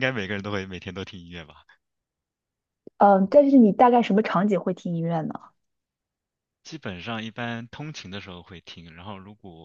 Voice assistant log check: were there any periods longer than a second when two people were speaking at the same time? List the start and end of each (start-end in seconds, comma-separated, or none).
none